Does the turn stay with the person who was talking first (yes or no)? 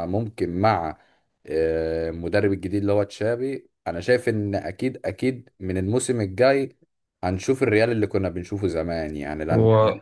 yes